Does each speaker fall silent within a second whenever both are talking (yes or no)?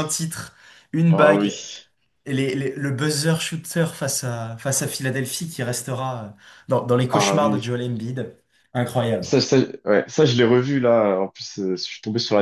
yes